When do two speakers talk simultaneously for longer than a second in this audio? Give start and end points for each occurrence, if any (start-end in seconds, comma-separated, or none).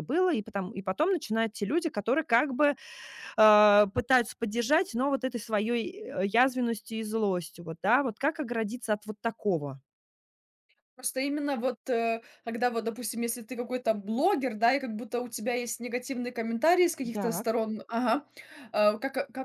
none